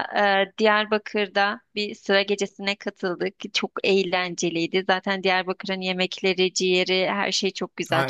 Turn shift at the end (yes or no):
yes